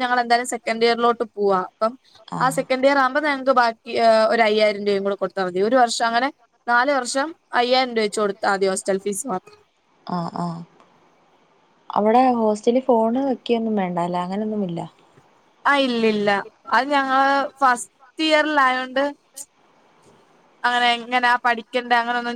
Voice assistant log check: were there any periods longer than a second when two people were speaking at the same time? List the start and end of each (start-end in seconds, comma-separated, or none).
none